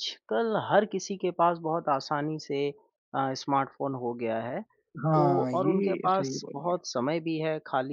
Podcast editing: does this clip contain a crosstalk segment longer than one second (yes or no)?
yes